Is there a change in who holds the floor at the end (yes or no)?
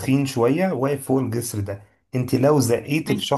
no